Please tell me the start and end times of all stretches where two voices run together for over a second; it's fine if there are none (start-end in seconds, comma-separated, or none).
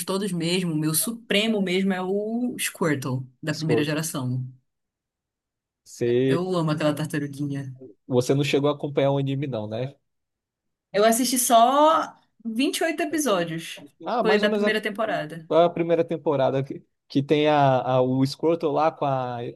14.2-15.5